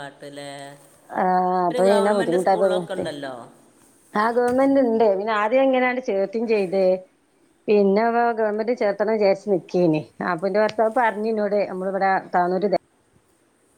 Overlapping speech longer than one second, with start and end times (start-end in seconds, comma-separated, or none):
1.7-3.0